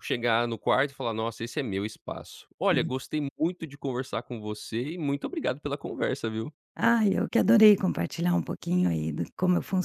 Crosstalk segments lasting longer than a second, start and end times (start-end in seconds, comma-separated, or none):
none